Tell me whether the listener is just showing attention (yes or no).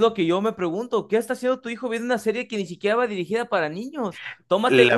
no